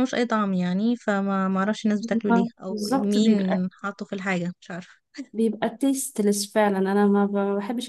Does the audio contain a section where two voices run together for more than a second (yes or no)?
yes